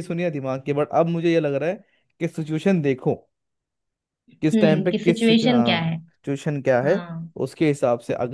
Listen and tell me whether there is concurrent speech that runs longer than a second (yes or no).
yes